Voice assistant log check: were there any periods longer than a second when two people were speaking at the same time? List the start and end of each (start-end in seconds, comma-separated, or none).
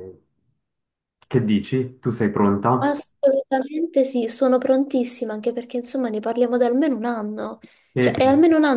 none